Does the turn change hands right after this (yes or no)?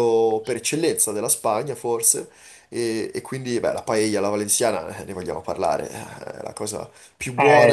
no